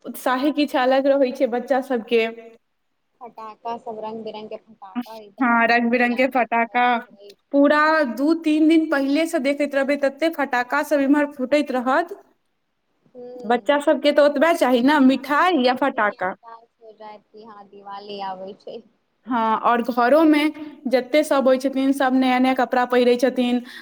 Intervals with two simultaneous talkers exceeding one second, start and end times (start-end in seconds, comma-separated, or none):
5.4-6.8, 15.0-16.3